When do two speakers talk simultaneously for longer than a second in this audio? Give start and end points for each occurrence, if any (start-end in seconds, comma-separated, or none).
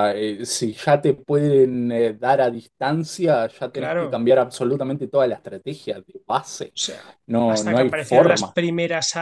7.3-8.6